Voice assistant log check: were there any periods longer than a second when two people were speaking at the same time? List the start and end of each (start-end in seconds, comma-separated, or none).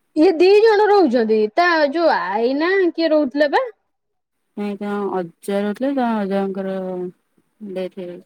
none